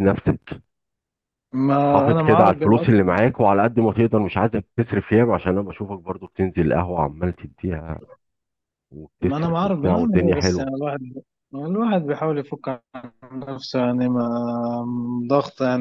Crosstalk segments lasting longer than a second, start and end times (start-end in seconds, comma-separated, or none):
9.2-10.7